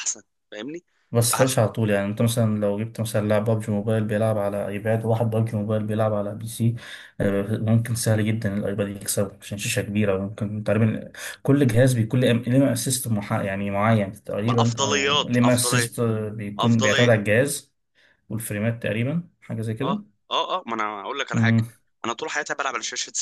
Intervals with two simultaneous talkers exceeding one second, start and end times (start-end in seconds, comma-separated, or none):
14.4-15.9